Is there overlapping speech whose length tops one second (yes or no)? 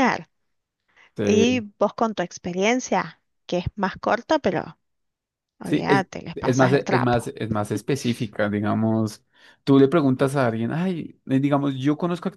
yes